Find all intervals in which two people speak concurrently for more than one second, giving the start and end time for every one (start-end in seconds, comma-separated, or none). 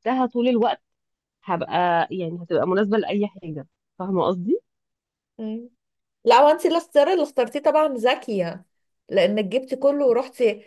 none